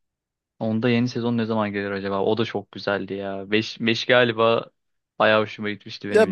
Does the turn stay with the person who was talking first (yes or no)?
no